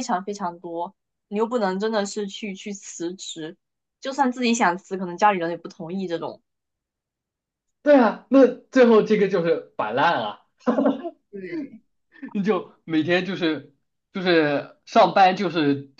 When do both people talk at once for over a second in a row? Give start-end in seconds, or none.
none